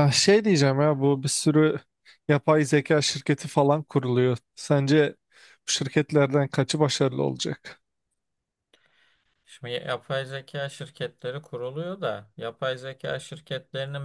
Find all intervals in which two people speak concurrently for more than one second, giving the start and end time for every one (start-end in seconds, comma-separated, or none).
none